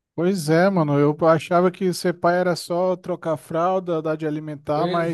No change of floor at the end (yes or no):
yes